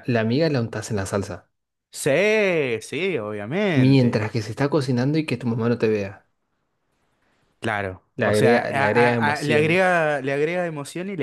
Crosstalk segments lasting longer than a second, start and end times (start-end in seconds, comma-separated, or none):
8.2-9.8